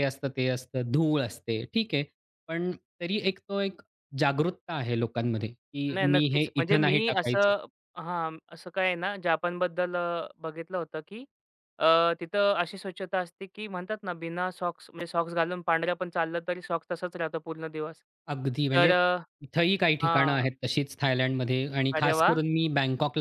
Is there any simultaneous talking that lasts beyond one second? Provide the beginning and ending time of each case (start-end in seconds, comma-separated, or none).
5.9-7.5